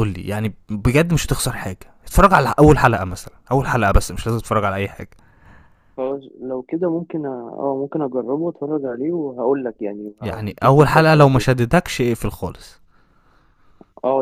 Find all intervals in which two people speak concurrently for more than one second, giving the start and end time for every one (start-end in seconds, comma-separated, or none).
10.2-11.5